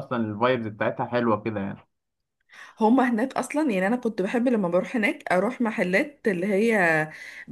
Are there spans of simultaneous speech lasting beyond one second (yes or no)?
no